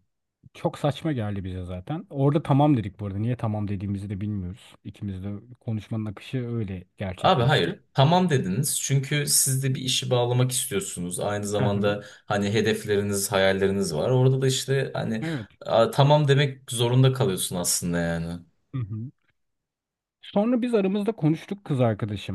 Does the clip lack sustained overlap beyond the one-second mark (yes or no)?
yes